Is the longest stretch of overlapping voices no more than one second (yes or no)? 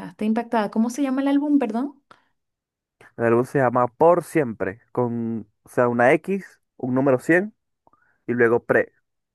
yes